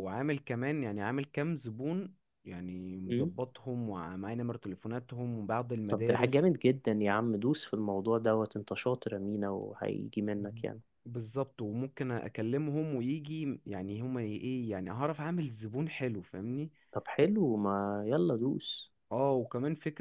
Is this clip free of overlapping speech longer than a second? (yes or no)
yes